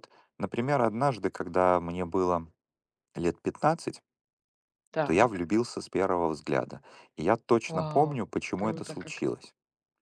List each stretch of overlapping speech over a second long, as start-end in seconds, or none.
7.7-9.2